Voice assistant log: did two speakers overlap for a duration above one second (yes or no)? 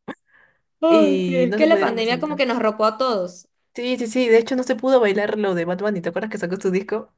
yes